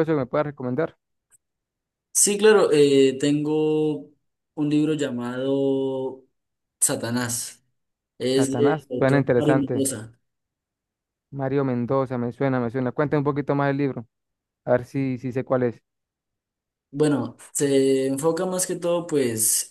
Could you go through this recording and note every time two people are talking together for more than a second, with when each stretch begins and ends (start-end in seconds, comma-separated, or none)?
8.3-9.9